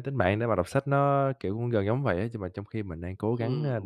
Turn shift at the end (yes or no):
yes